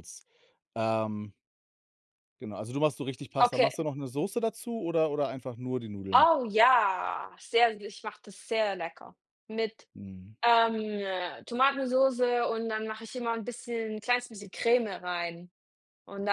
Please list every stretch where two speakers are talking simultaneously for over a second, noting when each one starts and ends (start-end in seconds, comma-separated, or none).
none